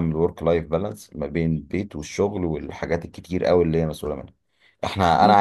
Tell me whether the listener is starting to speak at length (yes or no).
no